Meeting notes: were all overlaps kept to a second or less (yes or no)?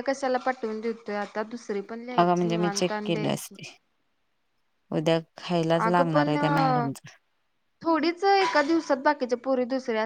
no